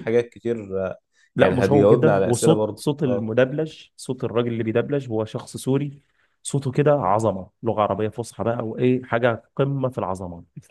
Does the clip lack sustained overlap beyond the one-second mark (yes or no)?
no